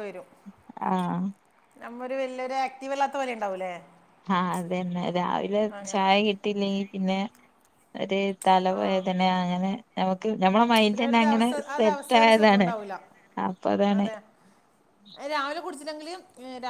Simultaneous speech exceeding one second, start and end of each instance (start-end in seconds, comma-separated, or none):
10.6-12.7